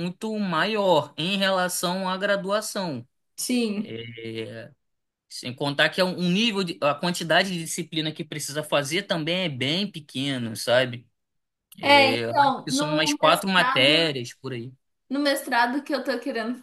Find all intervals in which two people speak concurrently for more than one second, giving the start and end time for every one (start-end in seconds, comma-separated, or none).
11.8-14.1